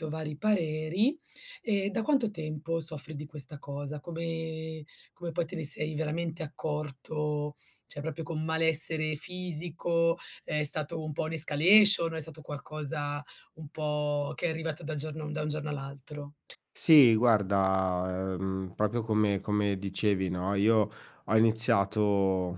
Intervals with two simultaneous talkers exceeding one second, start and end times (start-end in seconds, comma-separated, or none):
none